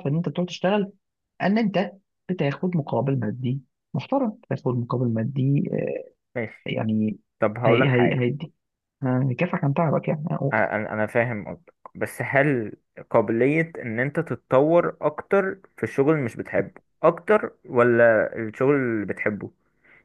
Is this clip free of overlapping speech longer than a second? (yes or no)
yes